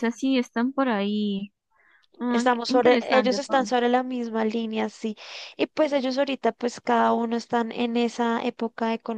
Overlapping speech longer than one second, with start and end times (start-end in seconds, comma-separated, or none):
2.3-3.9